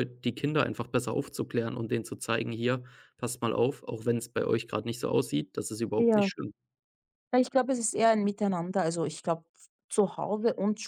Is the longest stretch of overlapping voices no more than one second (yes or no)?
yes